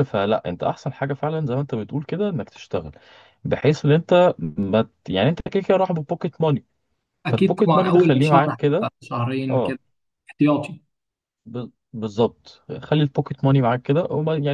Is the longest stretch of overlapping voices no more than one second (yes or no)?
no